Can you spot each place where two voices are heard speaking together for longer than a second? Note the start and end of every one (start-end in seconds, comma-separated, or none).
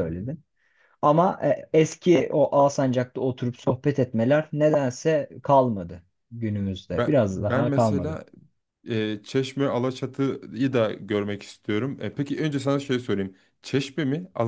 6.9-8.2